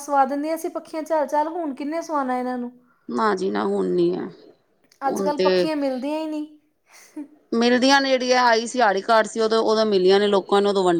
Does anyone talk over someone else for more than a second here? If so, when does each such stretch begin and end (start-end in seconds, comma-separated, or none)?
none